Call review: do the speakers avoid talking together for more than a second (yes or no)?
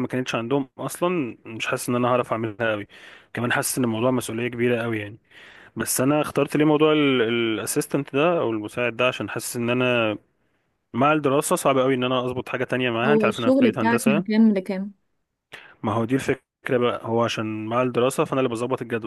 no